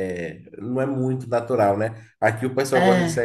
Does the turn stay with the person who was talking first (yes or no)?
yes